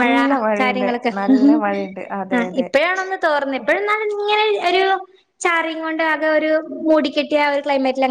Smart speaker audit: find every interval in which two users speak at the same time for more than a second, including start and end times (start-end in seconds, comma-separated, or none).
none